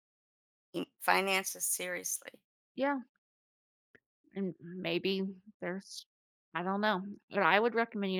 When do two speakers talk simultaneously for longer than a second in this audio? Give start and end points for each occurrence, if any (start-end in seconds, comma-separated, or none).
none